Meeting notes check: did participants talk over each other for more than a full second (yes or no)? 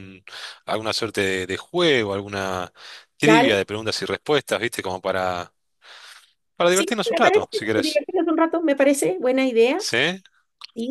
yes